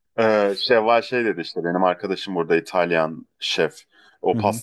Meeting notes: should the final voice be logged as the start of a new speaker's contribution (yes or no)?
no